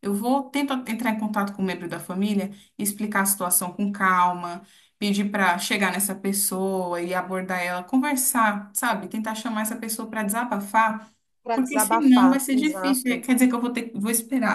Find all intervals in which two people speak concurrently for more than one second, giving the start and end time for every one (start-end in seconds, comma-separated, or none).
11.5-13.3